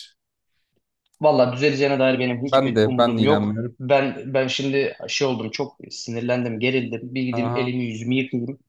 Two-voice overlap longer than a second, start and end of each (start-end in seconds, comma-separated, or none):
2.5-3.8